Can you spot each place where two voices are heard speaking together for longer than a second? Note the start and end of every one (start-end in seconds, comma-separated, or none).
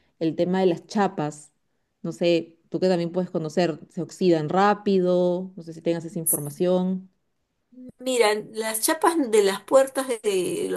none